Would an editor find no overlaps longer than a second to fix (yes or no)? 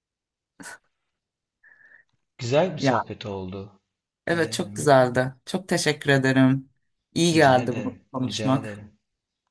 no